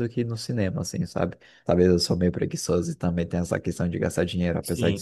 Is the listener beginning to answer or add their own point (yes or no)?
yes